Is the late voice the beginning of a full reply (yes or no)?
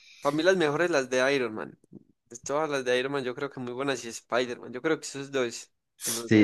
yes